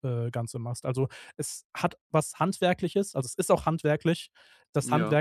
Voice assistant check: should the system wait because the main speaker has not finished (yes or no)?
yes